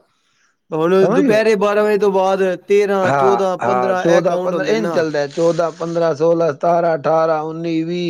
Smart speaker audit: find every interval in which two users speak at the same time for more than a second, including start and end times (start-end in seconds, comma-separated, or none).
3.1-5.0